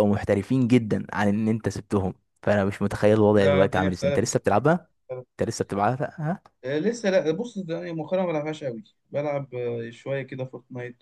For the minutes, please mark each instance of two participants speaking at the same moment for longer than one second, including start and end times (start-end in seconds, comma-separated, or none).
3.4-4.6